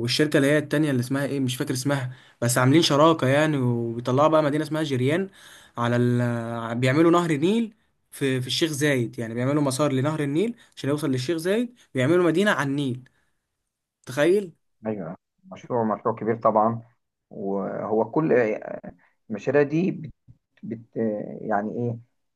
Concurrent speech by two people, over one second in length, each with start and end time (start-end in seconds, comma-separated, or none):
none